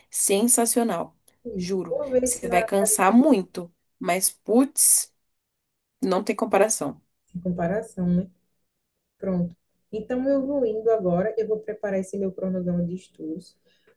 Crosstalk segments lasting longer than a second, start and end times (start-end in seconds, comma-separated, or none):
1.9-3.2